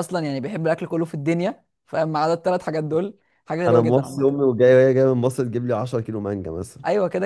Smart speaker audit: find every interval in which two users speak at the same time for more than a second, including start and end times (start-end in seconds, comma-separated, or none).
none